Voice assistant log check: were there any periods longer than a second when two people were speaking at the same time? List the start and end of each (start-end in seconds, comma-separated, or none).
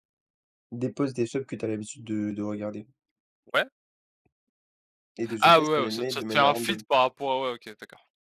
5.4-6.8